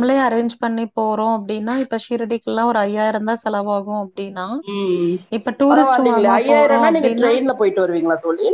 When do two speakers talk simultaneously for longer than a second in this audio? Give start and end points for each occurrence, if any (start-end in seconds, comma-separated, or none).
5.7-7.3